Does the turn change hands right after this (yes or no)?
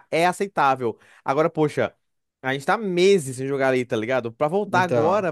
no